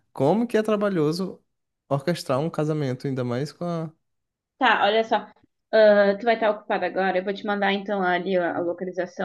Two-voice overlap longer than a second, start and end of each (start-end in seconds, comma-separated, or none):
none